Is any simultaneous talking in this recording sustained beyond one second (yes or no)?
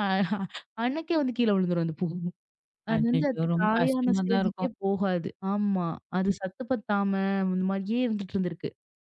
yes